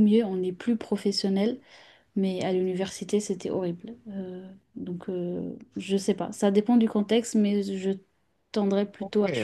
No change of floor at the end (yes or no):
no